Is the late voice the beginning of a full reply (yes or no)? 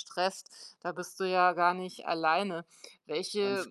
no